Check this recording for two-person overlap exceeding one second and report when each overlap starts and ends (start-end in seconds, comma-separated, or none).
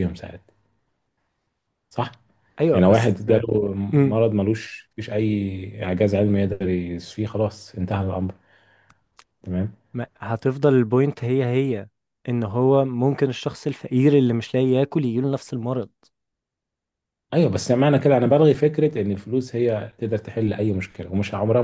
none